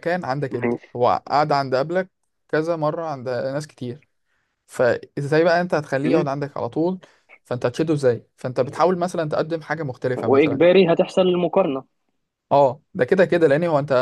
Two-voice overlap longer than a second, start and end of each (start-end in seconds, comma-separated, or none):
none